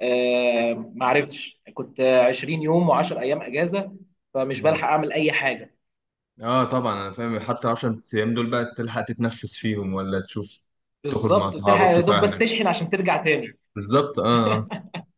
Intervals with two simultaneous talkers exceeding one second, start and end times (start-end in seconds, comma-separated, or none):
11.1-12.4